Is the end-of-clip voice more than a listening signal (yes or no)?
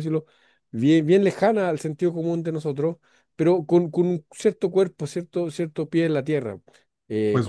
yes